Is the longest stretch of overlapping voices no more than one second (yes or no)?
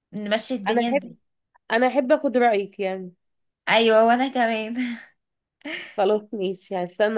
yes